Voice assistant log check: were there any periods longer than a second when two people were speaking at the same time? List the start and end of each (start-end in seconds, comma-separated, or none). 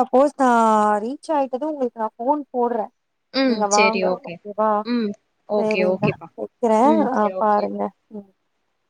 none